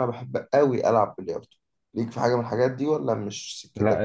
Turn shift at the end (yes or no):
yes